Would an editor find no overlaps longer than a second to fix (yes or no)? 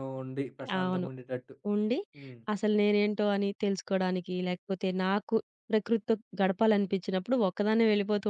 yes